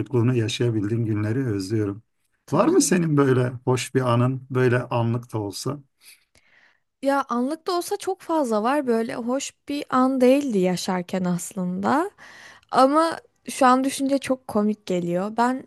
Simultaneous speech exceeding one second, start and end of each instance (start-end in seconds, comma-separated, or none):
none